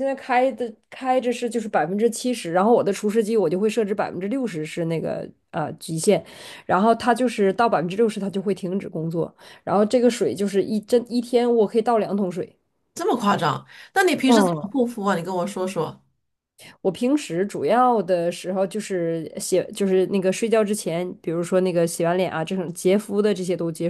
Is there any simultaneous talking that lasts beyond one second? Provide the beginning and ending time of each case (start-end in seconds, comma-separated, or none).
none